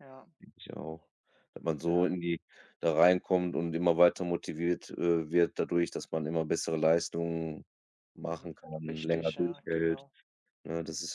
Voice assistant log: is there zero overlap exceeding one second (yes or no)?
no